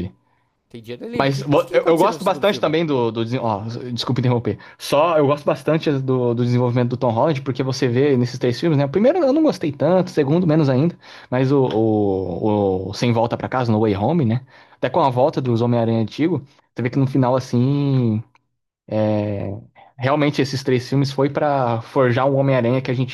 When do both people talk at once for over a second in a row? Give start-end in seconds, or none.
1.1-2.8